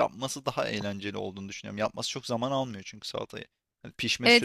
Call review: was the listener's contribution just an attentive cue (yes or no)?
no